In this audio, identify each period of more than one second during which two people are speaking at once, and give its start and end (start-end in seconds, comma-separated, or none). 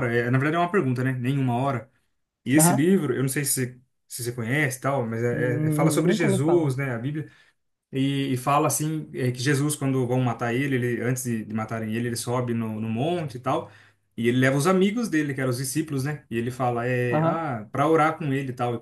5.3-6.7